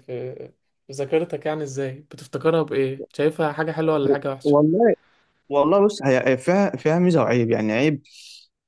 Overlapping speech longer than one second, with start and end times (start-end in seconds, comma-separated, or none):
none